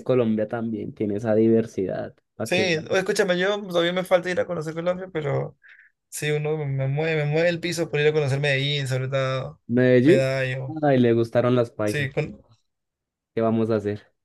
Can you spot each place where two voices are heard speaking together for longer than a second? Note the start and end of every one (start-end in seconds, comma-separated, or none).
none